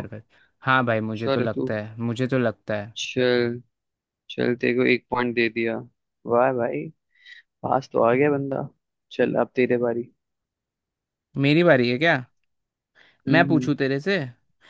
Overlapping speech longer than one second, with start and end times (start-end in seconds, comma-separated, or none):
none